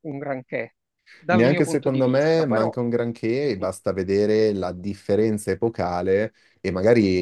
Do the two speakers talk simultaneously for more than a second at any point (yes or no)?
yes